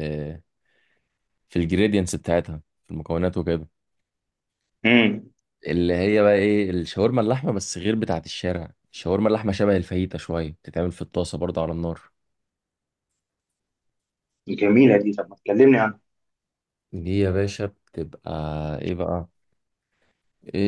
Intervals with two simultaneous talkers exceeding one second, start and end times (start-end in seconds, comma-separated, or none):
none